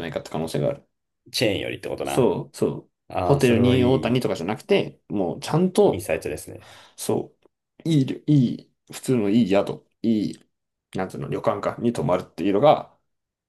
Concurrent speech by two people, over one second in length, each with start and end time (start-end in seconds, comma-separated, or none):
3.1-4.4